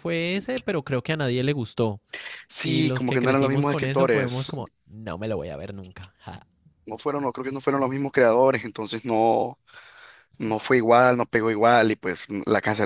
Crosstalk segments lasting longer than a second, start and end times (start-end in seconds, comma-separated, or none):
2.6-4.5